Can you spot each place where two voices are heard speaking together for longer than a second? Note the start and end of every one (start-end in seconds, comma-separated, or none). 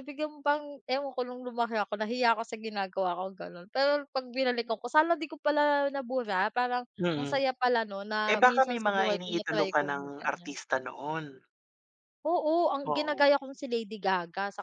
8.3-10.5